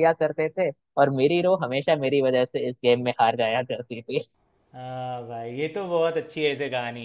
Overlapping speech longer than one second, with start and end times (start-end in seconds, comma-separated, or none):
none